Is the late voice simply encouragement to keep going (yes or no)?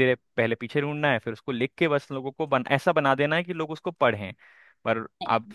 yes